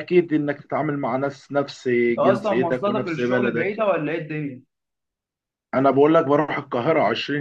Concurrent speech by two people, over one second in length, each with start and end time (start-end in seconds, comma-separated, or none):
2.1-3.8